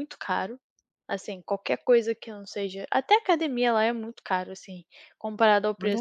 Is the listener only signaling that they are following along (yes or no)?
no